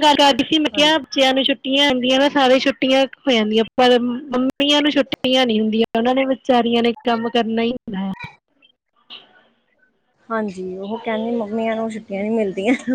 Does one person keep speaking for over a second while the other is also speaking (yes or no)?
no